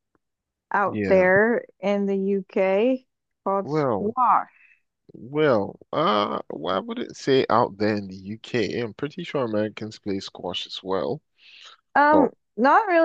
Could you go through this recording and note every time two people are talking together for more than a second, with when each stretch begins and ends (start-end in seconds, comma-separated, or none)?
none